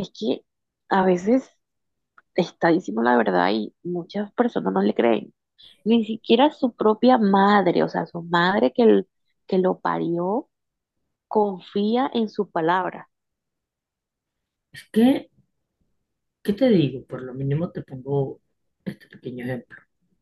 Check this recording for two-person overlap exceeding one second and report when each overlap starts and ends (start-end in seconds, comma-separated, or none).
none